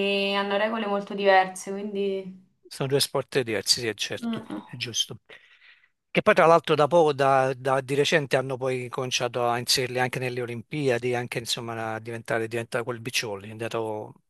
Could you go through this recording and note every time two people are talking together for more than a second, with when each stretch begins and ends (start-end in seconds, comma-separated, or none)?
none